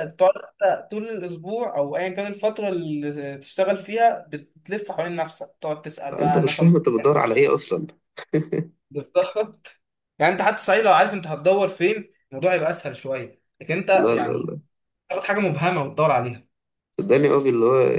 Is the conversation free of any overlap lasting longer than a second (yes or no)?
no